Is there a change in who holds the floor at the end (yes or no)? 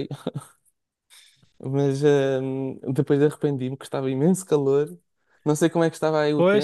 yes